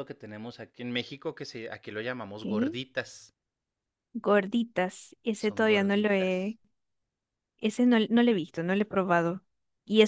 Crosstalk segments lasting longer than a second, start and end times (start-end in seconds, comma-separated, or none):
5.4-6.6